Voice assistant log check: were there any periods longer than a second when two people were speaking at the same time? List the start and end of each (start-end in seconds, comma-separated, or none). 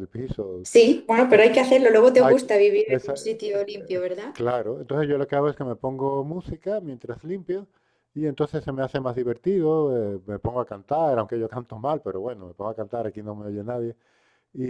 2.1-4.4